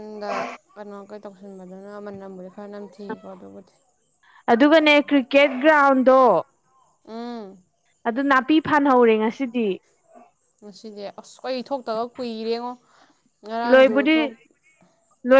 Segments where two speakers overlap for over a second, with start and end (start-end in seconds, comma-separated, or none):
none